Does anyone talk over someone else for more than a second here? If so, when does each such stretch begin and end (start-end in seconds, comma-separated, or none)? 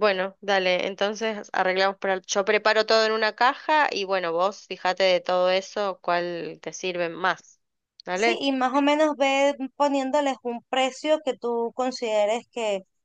none